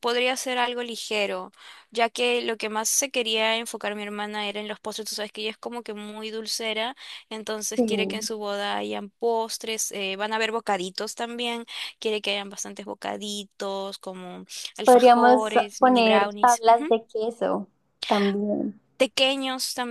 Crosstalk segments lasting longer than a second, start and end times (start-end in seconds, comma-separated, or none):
14.8-16.6